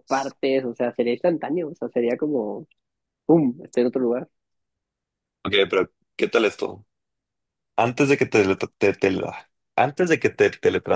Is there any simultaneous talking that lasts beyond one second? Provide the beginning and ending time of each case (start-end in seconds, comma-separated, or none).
none